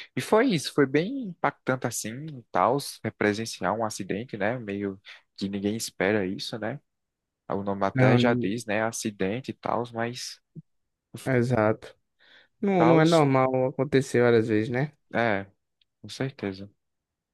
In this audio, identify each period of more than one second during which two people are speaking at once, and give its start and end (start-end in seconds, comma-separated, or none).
none